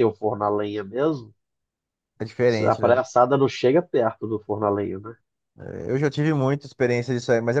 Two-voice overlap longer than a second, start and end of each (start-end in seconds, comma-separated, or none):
none